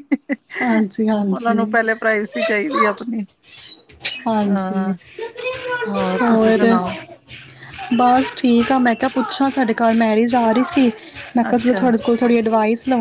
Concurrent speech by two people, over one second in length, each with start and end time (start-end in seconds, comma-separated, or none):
none